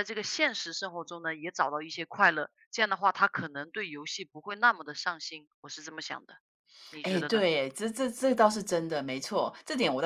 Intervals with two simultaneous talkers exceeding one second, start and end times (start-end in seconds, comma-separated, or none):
none